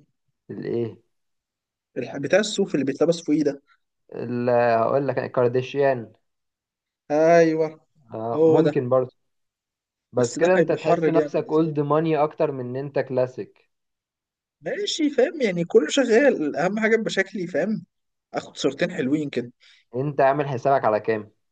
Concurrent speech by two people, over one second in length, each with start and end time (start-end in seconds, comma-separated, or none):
10.2-11.7